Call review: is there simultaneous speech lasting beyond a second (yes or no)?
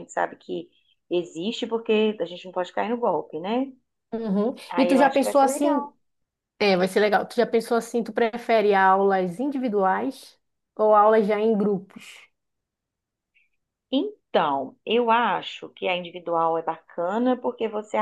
yes